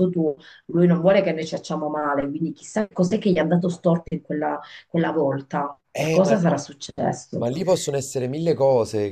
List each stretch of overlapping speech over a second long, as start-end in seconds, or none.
none